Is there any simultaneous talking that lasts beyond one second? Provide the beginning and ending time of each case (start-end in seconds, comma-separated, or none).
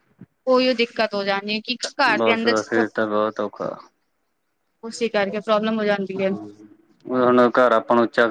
none